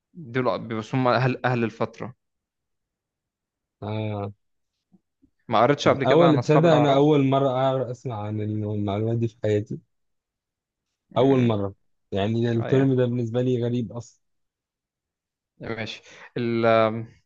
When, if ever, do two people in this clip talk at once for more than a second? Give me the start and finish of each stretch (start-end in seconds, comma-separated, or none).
5.8-7.1